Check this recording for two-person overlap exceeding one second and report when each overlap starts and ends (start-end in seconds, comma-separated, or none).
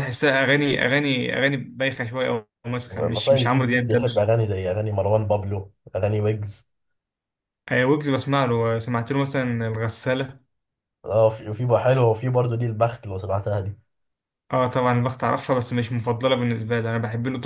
2.9-4.3